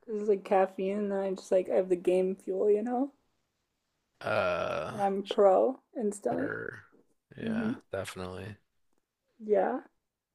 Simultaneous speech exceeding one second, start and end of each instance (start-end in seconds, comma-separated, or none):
none